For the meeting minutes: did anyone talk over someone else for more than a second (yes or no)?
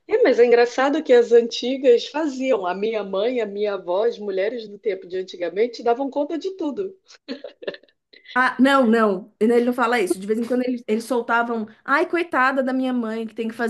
no